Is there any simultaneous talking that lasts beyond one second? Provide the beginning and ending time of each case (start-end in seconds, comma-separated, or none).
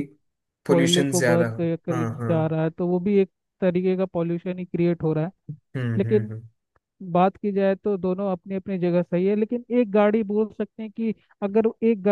0.7-2.3